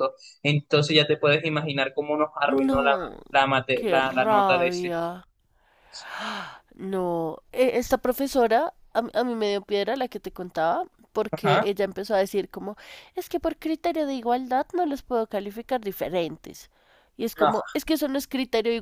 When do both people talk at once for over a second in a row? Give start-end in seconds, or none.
3.7-5.0